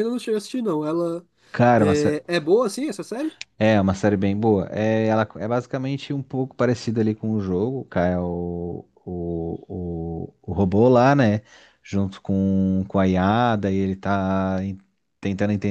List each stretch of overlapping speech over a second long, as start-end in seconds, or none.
none